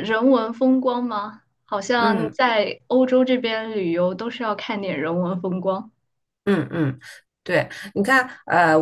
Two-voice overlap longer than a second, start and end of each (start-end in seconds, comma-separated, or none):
none